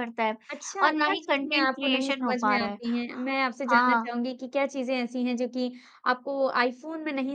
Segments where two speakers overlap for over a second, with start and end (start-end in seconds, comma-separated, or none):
0.8-2.8